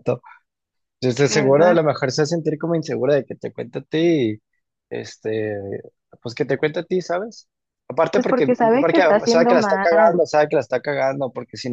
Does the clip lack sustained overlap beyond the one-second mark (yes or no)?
no